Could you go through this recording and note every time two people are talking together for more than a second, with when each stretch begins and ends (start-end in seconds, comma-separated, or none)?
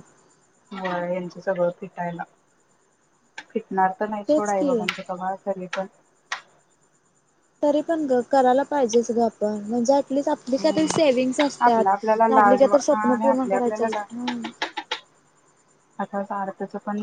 11.7-14.0